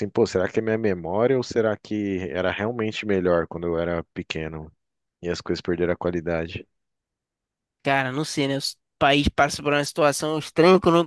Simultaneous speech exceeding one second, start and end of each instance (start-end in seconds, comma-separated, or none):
none